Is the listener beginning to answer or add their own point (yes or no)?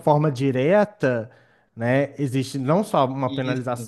no